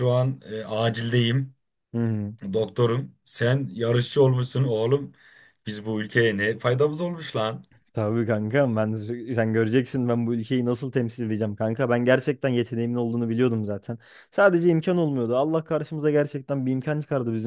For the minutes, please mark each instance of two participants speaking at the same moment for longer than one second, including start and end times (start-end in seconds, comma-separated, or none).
none